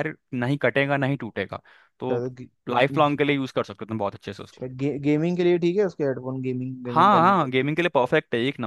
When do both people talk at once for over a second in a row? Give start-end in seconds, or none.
none